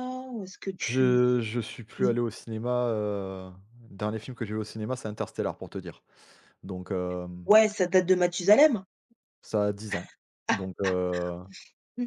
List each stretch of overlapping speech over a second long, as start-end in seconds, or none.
none